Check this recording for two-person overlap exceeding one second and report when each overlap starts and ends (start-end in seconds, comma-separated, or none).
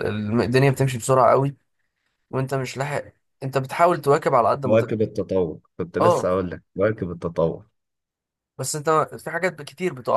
none